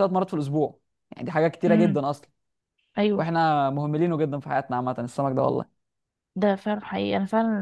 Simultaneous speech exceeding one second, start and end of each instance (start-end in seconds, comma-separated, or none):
none